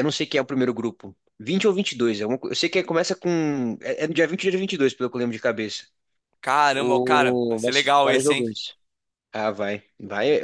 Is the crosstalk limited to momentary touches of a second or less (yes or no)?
no